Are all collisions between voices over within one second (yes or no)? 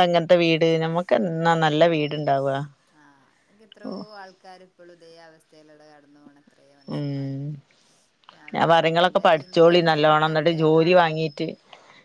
no